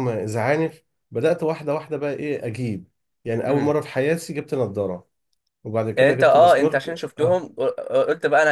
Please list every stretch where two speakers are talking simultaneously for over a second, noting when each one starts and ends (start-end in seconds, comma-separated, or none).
6.0-7.4